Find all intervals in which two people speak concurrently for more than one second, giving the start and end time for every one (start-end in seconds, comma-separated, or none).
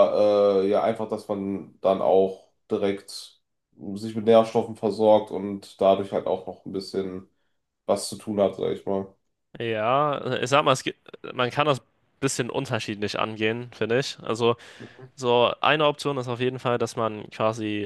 none